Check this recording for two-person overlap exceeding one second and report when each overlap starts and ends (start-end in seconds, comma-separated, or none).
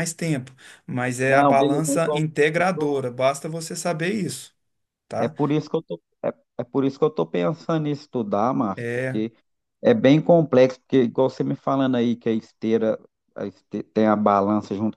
1.3-3.0